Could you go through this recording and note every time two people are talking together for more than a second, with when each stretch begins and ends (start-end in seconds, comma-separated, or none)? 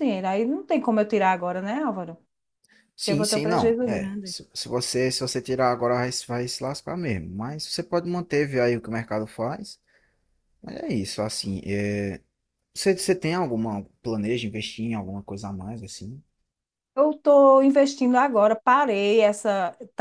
3.0-4.4